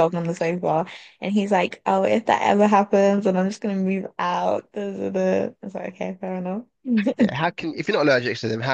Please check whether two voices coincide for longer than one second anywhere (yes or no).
no